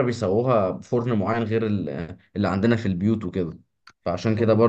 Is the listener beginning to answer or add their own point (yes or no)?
no